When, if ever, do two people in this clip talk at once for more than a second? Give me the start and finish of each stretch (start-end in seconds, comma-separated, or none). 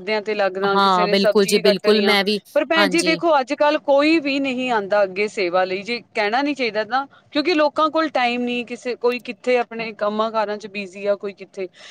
0.7-2.1